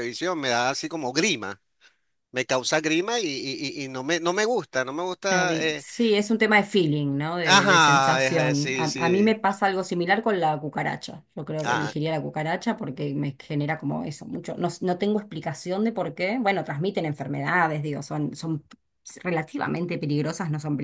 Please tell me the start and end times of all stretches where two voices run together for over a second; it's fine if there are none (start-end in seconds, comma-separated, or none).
7.4-9.4